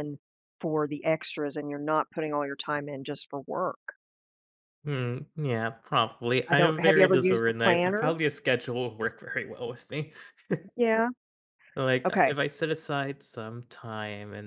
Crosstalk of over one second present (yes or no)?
yes